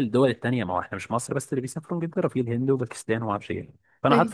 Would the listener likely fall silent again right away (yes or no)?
yes